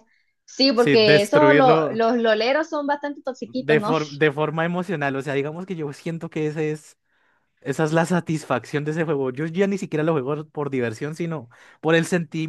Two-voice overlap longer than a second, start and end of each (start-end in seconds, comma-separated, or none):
0.8-2.0